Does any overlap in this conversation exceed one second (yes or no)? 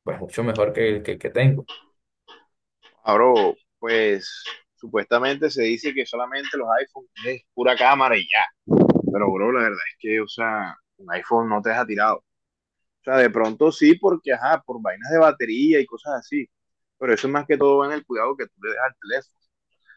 no